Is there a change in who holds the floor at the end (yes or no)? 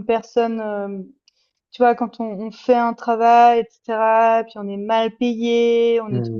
no